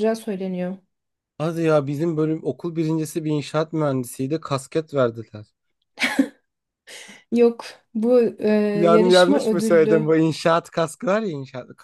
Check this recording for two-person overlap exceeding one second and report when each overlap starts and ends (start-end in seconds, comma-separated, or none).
8.9-10.2